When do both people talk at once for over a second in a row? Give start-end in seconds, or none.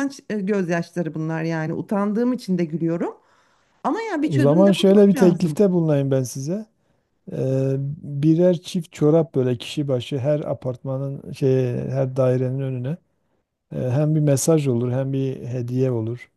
4.2-5.6